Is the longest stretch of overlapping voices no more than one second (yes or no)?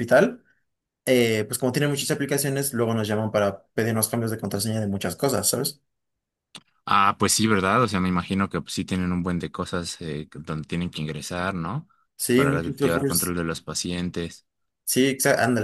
no